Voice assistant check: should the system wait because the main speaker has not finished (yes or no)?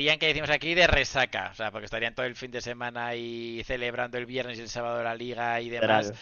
yes